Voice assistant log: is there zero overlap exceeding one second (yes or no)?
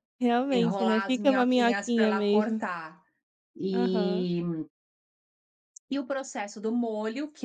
no